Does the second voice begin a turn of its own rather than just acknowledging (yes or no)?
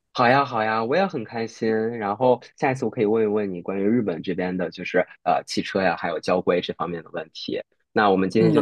yes